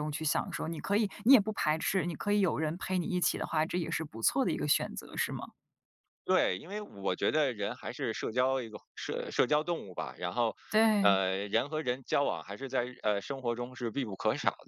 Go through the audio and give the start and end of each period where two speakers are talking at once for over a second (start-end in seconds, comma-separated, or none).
none